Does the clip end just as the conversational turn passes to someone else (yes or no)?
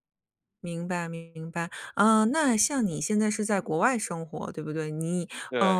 no